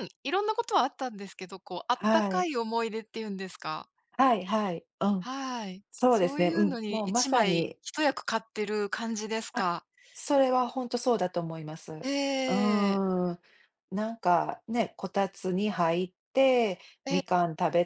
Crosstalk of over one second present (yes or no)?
yes